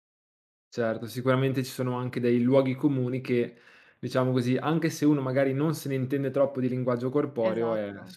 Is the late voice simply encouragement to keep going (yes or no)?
yes